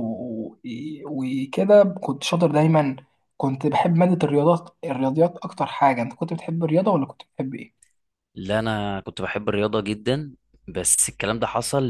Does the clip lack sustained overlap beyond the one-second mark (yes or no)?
yes